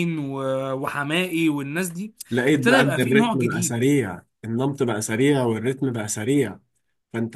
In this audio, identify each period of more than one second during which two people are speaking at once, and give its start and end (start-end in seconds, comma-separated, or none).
2.5-3.8